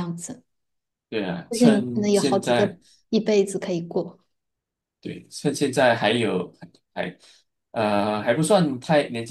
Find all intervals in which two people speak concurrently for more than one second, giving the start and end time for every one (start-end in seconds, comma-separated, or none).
1.5-2.7